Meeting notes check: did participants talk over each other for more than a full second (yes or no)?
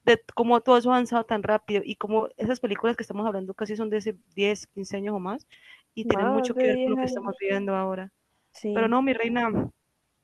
yes